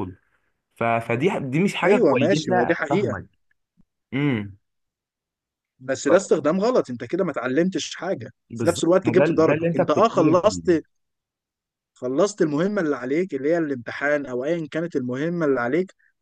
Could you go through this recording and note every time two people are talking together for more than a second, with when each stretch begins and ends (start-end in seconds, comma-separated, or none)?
1.9-3.2, 8.5-10.6